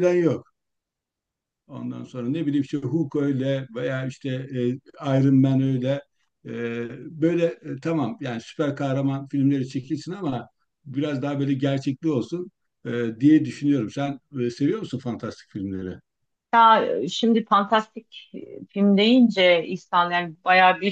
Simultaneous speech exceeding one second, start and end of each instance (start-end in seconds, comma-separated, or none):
none